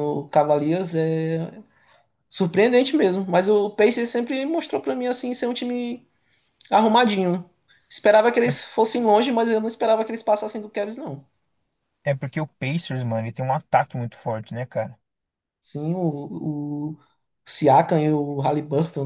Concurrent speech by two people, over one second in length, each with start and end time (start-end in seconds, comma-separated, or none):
none